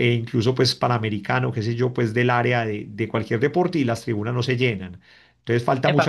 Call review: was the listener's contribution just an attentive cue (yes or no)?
no